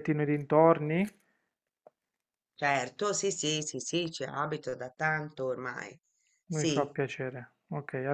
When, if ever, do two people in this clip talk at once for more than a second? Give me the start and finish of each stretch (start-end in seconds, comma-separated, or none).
none